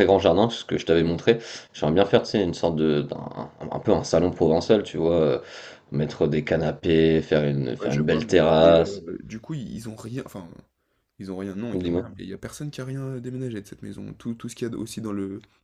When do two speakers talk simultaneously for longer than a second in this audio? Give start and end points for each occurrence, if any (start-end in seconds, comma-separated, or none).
7.8-9.0